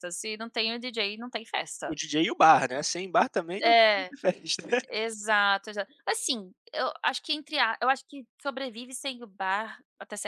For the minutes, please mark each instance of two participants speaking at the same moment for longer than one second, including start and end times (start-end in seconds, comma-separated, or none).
none